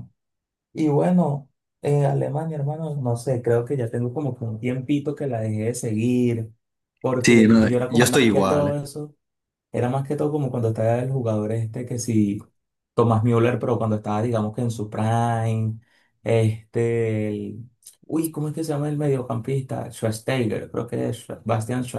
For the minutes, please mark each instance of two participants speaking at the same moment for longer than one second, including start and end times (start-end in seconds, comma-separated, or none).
7.2-8.8